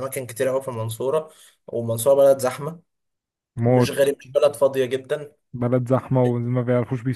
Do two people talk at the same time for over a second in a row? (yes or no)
no